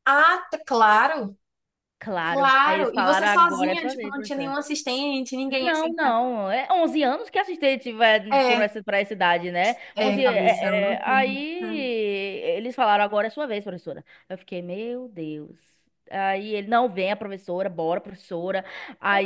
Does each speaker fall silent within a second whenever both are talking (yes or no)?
no